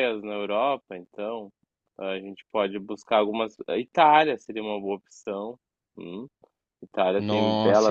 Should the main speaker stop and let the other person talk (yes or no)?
yes